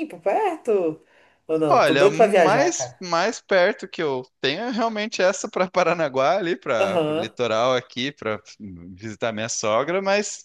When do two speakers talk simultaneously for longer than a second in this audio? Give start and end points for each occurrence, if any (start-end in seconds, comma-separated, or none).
1.7-3.0